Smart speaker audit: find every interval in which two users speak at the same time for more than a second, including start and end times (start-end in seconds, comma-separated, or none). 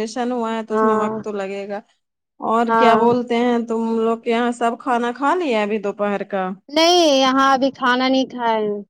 none